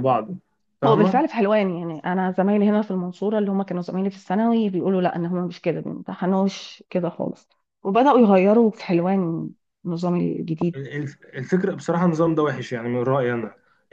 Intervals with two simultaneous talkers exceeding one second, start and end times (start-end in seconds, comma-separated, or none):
none